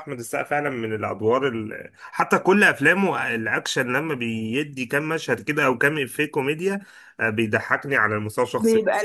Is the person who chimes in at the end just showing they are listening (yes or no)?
yes